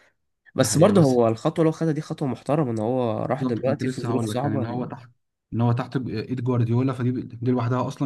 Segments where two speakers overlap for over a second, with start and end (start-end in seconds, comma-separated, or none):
3.4-4.8